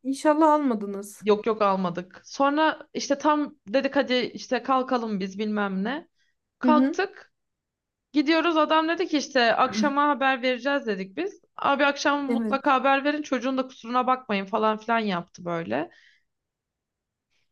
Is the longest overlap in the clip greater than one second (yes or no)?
no